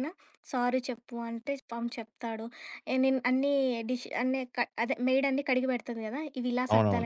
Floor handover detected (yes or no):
yes